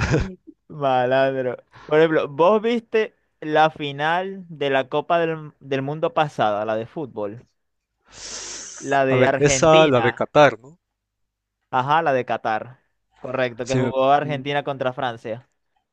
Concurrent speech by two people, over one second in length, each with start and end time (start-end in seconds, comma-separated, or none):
9.1-10.3